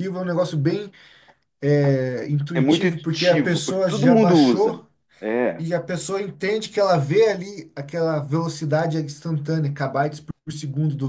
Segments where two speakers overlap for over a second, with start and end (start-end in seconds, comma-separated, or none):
2.5-4.8